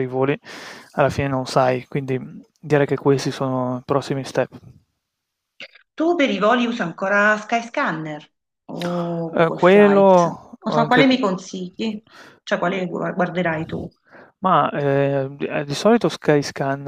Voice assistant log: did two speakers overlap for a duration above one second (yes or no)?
yes